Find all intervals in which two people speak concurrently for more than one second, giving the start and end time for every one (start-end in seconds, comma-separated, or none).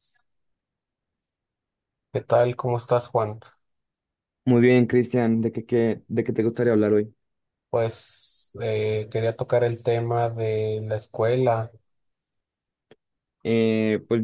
none